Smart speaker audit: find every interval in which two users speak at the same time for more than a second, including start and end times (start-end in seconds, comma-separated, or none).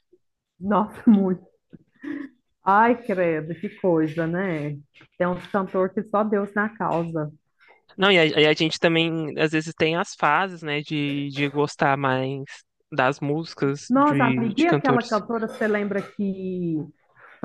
13.9-15.2